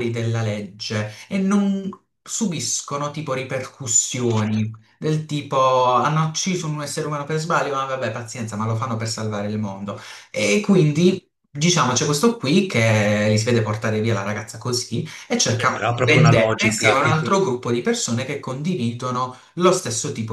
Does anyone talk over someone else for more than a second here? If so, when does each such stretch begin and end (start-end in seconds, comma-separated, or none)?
15.6-17.2